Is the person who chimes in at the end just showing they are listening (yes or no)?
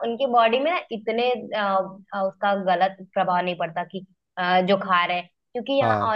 yes